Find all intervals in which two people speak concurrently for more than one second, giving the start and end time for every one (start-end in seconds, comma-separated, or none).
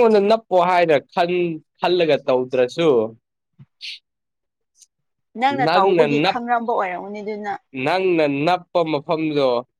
none